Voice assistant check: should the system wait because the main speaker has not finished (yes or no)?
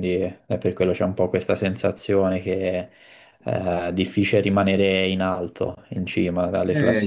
no